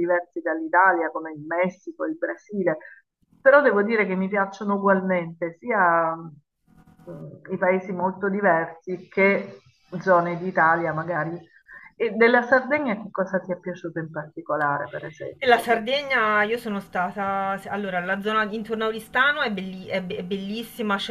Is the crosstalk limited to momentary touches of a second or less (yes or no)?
yes